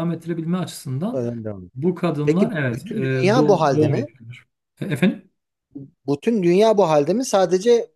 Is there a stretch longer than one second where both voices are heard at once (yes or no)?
yes